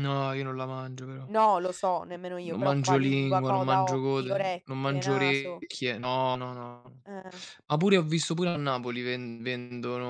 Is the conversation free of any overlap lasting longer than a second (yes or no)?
no